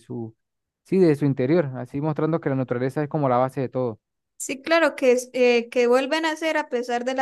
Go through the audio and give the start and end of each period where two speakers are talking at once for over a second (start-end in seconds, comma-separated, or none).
none